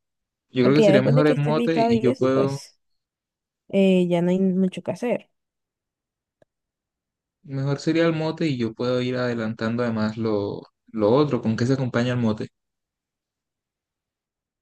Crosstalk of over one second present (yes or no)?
yes